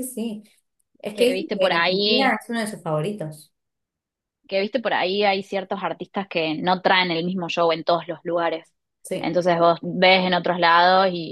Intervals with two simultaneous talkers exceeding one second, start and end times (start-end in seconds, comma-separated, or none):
1.1-2.4